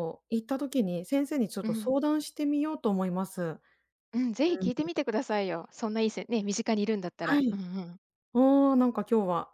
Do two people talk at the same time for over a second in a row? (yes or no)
no